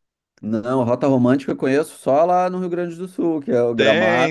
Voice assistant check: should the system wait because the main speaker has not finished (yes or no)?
no